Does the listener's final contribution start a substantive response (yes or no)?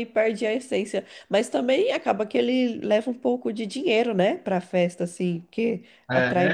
yes